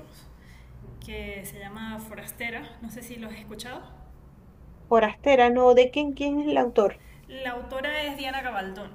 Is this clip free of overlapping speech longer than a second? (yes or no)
yes